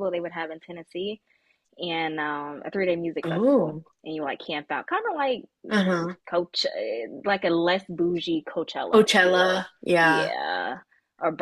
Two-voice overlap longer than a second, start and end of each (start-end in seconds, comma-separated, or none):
8.9-10.3